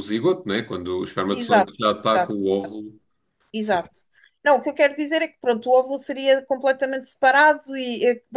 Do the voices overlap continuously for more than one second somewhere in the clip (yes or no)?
yes